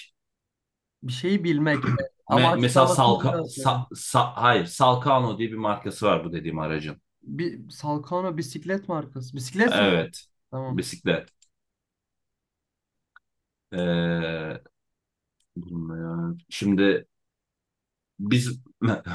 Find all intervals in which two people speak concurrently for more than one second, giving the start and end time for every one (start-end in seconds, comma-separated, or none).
2.3-3.7